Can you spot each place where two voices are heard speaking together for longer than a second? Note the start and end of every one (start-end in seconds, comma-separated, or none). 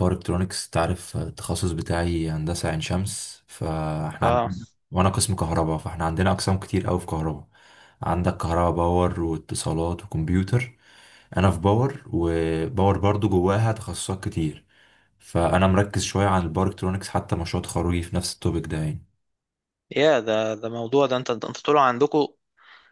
none